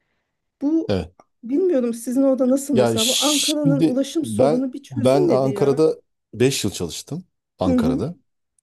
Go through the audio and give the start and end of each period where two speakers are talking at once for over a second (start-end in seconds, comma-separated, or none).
2.7-5.9